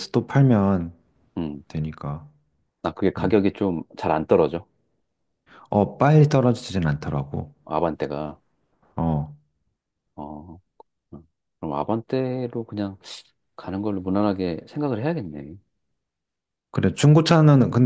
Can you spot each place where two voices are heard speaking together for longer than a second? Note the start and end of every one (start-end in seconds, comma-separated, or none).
none